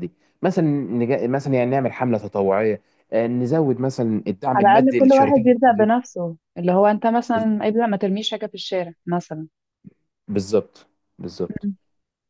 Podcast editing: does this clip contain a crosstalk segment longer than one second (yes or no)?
yes